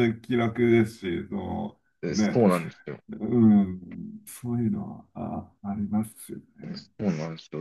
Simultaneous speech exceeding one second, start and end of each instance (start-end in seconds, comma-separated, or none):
none